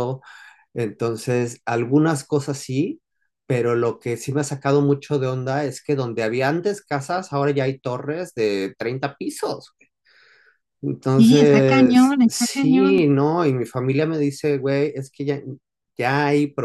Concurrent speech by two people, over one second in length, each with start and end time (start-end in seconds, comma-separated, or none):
11.1-12.9